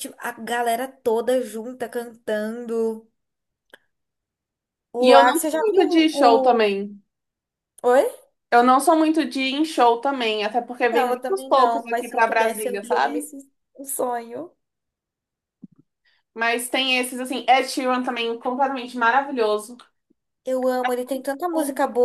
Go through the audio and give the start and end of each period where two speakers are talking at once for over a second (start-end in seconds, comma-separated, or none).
5.0-6.7, 10.9-13.3